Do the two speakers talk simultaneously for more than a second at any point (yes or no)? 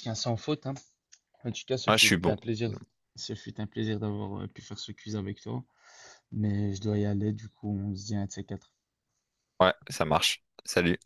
no